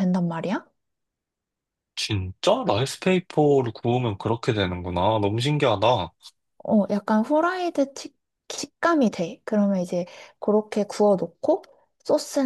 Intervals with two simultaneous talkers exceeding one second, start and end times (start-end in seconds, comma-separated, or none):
none